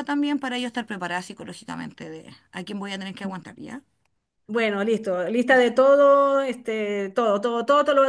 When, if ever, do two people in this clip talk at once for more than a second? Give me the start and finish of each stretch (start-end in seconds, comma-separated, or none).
none